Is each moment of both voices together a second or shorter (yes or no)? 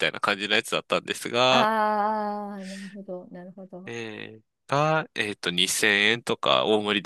yes